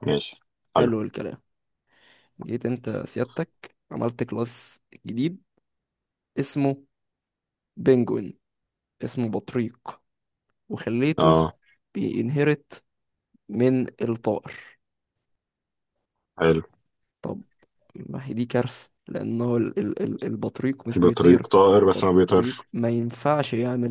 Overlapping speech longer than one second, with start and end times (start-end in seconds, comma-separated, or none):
20.9-22.7